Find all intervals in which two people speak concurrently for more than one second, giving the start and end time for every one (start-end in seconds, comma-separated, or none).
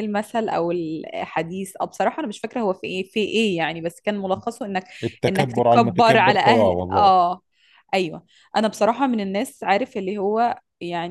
5.3-7.1